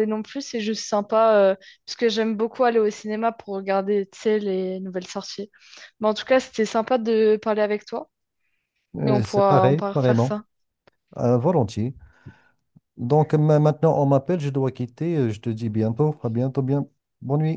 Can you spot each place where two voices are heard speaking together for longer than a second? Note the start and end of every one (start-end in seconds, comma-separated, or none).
9.0-10.4